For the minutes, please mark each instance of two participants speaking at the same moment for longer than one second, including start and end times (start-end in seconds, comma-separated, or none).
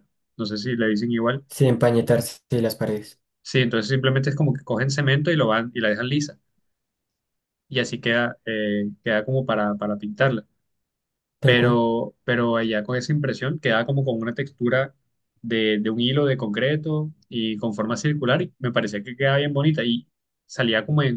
none